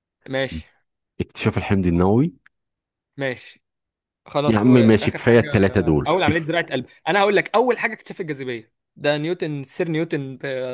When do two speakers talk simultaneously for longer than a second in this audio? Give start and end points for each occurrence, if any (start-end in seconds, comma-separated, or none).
4.5-6.5